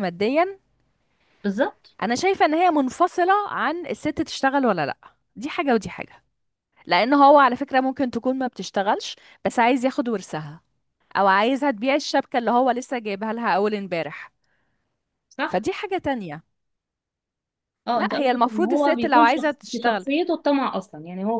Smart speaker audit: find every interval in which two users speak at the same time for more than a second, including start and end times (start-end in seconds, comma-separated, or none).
17.9-20.0